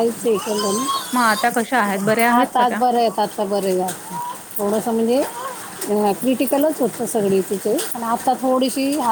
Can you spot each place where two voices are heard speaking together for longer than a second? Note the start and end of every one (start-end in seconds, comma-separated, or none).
none